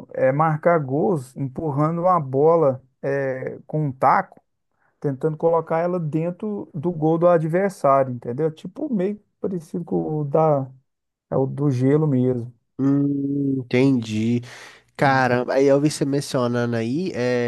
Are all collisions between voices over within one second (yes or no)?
yes